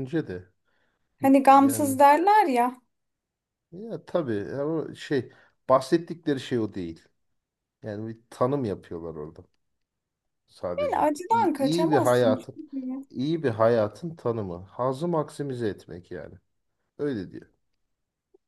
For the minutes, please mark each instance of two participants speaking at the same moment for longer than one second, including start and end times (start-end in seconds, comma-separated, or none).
10.8-12.6